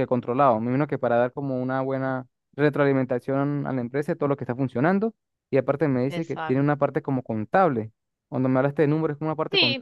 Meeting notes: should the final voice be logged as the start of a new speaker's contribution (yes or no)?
yes